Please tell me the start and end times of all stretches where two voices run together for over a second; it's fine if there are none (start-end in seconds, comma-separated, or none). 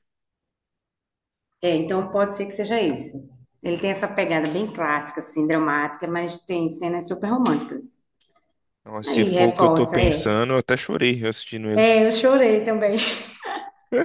9.1-10.4